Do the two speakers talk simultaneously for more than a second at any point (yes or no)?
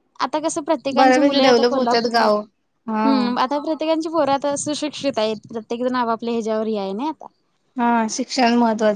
yes